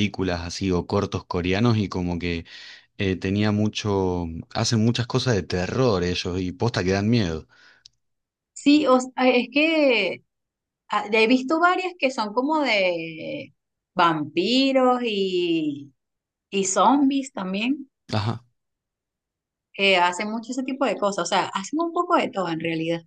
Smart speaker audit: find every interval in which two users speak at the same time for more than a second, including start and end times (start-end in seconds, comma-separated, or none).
none